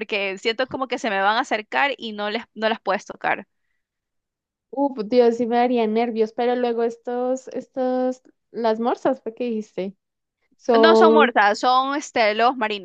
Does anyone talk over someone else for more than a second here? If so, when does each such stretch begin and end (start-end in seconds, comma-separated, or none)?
none